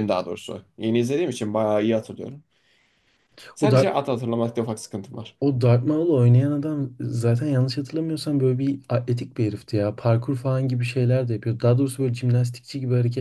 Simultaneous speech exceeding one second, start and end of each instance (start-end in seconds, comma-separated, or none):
none